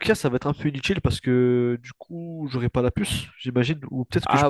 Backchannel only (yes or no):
yes